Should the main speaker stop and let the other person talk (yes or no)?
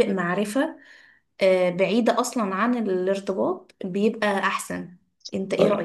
yes